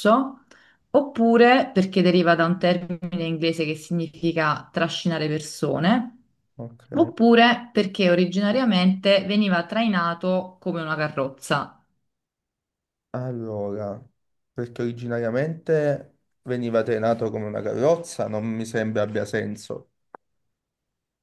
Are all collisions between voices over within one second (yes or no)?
yes